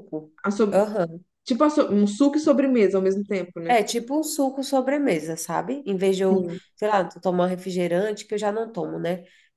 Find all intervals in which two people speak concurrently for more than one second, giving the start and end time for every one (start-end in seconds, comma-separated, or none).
none